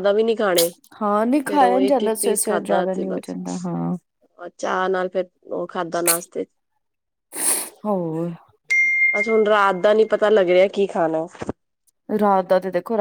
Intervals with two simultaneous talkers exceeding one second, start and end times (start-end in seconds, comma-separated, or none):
1.5-3.4